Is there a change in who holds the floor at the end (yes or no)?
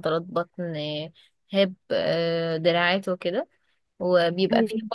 no